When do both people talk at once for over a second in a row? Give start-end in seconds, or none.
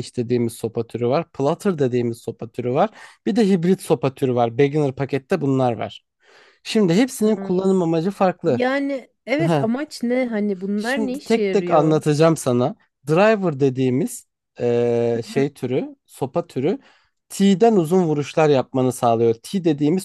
10.8-12.0